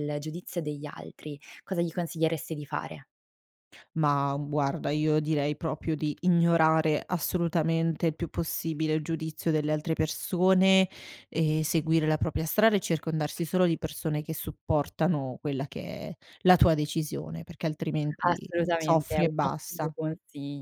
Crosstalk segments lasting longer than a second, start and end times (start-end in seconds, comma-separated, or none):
18.3-19.9